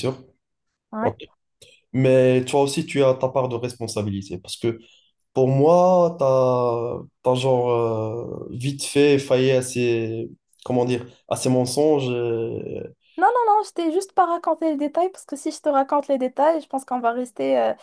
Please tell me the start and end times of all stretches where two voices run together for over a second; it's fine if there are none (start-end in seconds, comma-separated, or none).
none